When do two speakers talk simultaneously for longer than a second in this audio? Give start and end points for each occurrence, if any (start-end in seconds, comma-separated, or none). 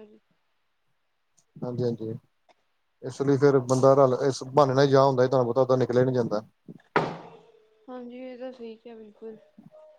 none